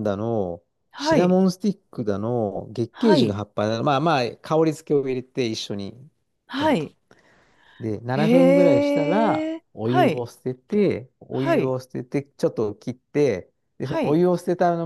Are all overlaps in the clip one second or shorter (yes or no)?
no